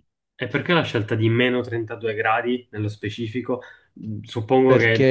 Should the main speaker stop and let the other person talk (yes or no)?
no